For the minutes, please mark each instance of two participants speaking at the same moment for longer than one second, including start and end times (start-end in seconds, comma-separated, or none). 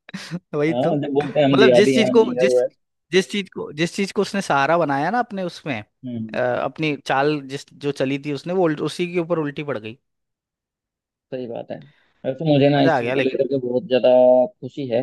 0.7-2.6